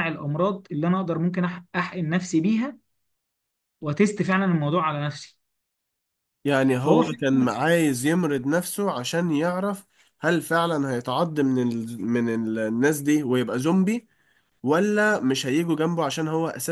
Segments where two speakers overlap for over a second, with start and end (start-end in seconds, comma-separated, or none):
none